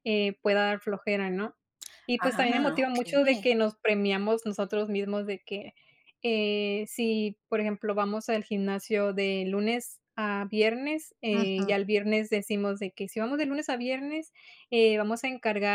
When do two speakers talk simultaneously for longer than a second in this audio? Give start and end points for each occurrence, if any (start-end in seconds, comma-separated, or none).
2.2-3.5